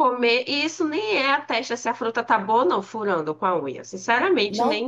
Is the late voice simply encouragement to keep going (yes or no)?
no